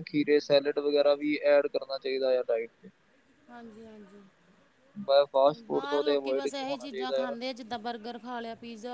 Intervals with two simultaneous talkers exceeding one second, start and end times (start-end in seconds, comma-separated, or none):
none